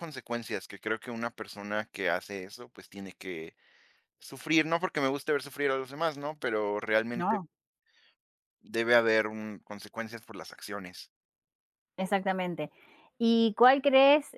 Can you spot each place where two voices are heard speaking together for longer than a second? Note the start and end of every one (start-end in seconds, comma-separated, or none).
none